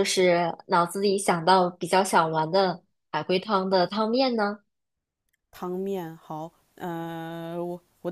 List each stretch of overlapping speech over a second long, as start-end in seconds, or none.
none